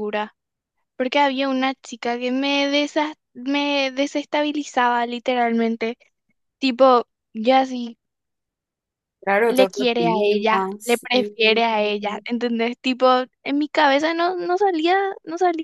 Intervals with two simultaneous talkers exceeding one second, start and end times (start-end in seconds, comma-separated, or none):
9.5-11.3